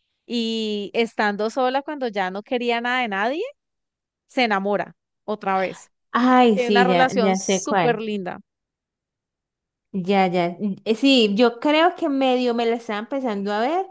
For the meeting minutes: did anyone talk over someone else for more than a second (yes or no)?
yes